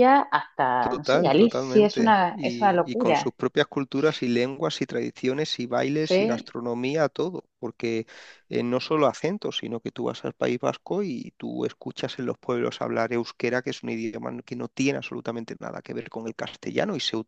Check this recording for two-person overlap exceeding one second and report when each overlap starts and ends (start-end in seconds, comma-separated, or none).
0.8-3.3